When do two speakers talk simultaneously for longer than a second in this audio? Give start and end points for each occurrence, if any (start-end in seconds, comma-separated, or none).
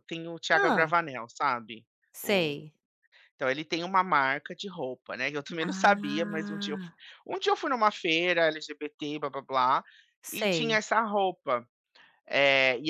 5.6-7.0